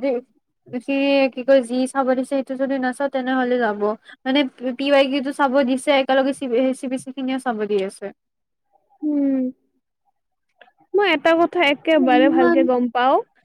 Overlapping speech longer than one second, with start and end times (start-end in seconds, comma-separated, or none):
none